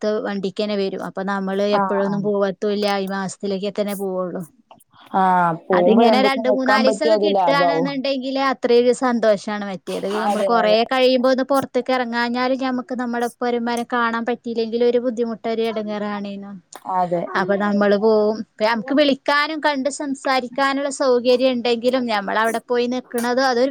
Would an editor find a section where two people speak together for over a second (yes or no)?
yes